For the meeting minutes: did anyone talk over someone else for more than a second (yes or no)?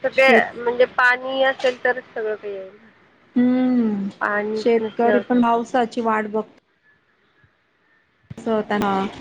yes